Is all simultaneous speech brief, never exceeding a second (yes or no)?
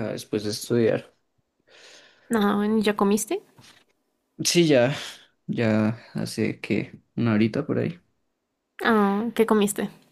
yes